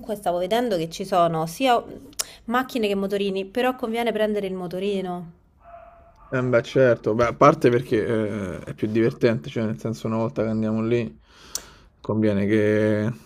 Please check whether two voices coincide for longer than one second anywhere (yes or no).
no